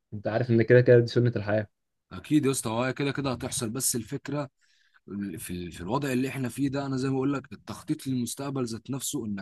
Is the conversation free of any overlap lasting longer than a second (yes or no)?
yes